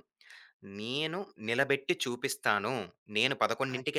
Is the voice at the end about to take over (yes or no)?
no